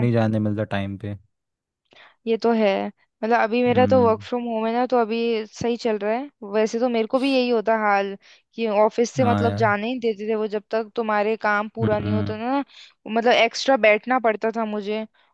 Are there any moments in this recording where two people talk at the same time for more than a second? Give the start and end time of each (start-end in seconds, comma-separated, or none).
none